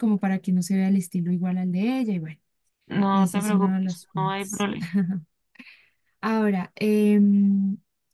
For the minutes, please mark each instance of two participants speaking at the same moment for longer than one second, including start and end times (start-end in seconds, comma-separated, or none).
3.1-4.7